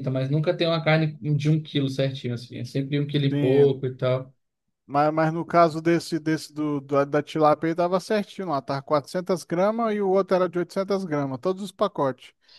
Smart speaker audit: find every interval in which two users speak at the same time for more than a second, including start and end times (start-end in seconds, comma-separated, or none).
none